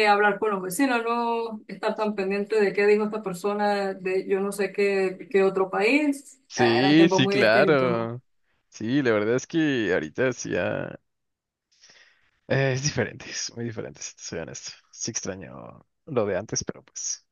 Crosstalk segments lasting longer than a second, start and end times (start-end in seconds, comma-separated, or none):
6.5-8.1